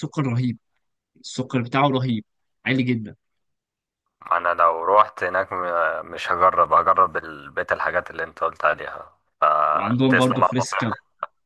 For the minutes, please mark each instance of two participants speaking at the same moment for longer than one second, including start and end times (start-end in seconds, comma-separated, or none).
9.7-10.9